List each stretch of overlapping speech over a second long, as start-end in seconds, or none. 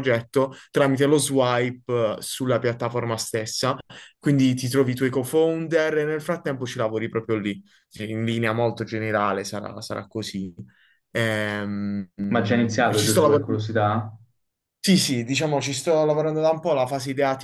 12.3-13.6